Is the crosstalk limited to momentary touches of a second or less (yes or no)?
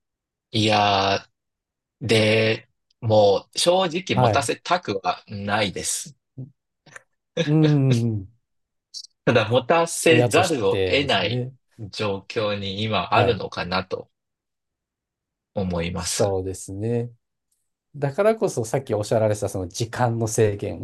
no